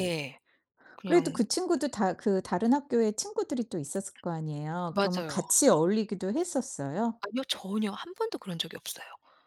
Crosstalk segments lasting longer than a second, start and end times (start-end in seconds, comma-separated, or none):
none